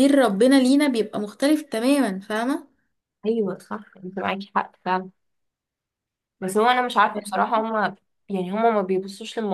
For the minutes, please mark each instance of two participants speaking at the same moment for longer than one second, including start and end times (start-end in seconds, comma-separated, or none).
none